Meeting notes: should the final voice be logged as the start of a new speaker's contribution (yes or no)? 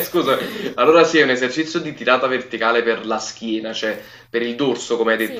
yes